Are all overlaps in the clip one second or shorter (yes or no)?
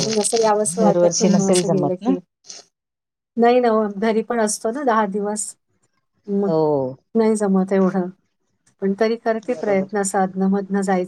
no